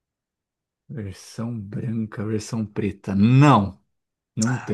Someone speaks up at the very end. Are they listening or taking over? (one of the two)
taking over